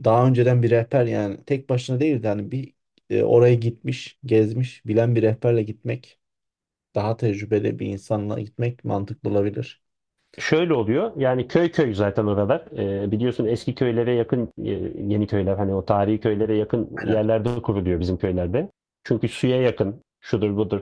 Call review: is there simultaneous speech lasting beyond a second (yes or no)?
no